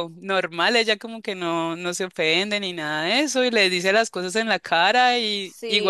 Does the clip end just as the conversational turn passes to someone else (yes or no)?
no